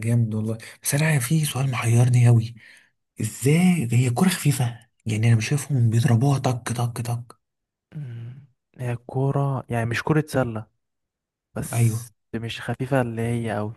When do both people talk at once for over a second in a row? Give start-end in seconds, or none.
none